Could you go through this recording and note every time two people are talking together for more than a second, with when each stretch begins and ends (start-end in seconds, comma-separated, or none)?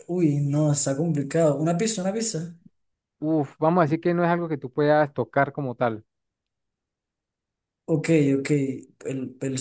none